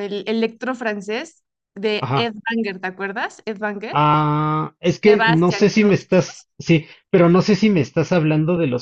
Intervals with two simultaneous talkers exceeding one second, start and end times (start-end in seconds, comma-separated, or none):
5.0-6.5